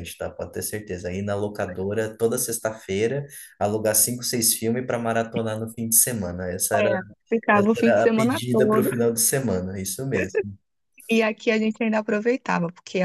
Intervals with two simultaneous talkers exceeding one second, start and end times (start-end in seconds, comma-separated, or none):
7.5-8.9